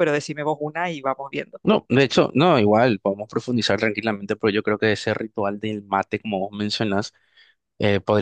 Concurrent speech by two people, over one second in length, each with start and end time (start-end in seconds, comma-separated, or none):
none